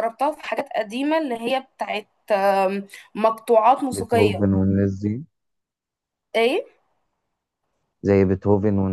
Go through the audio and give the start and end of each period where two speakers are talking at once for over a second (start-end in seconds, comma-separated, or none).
none